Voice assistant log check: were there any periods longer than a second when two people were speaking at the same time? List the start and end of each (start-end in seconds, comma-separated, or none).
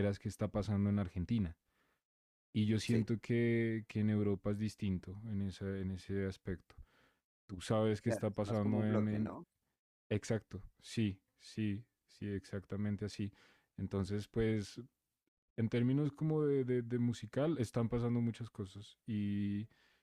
8.0-9.3